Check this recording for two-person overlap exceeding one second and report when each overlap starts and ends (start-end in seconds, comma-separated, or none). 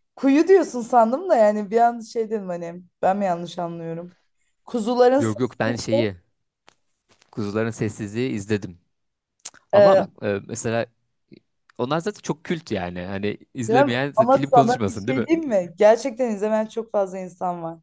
13.7-15.3